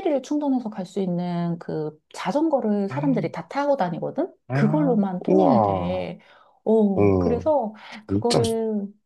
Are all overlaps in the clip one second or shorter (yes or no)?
no